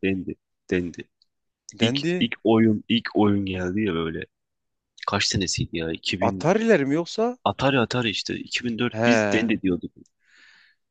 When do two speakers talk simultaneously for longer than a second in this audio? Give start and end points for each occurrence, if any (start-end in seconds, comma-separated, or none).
none